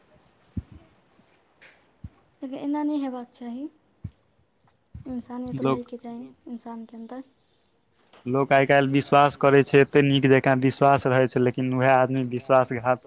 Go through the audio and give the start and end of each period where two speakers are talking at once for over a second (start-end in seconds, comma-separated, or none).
none